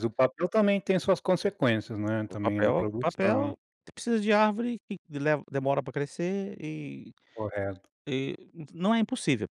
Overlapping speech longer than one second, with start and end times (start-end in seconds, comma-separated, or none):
2.3-3.5